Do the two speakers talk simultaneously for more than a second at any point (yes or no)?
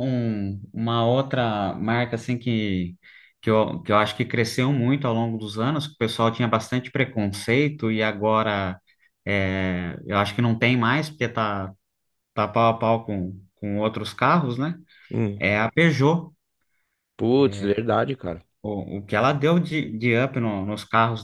no